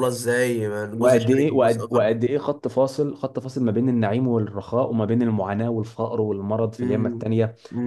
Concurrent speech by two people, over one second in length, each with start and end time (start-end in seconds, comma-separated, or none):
1.0-2.2